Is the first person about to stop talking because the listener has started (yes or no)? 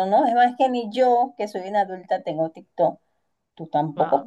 no